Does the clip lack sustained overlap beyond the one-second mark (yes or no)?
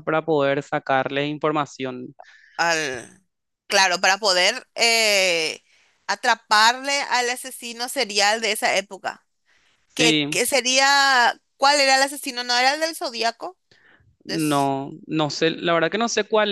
yes